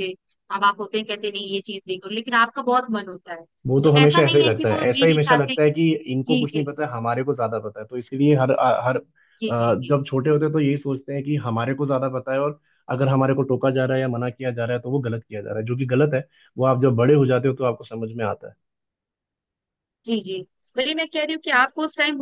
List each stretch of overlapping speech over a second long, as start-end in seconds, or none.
3.8-5.5